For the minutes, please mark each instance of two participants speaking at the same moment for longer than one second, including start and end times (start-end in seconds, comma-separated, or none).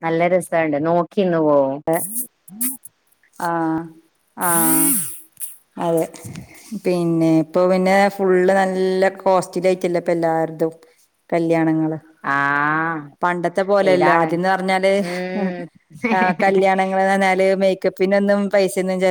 none